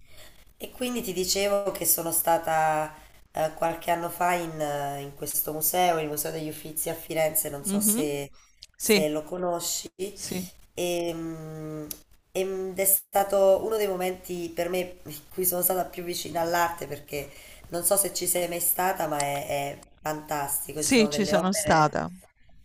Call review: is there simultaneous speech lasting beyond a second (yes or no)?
yes